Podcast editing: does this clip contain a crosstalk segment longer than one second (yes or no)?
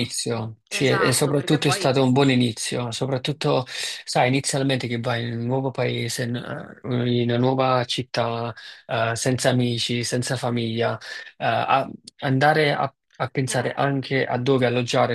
yes